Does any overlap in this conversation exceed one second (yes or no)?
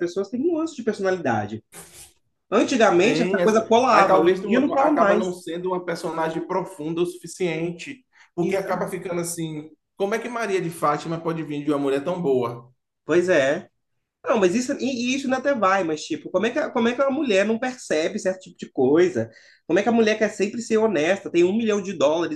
yes